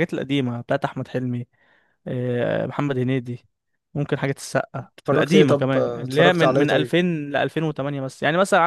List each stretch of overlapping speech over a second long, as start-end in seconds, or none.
5.0-7.0